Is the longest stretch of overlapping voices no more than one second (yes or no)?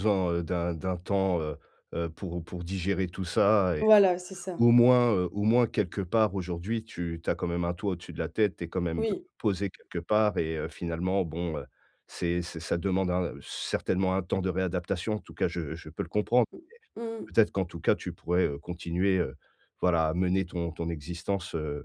yes